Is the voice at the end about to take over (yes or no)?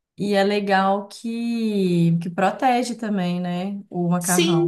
yes